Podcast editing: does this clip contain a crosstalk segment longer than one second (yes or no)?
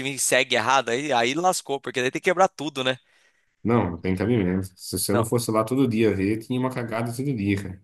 no